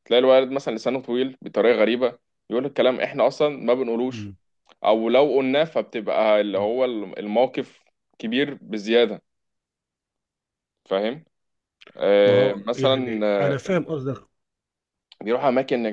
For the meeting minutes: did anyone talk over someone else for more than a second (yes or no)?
yes